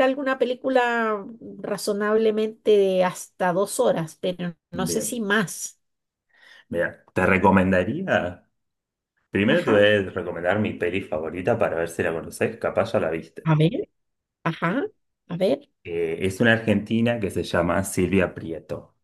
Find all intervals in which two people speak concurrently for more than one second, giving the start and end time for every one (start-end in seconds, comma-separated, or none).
none